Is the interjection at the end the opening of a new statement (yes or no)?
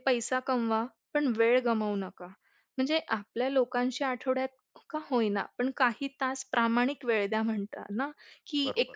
no